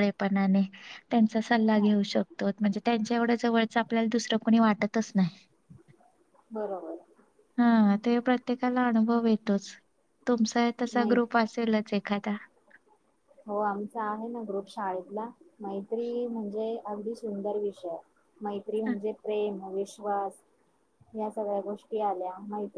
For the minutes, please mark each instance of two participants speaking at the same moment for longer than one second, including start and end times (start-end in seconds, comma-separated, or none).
none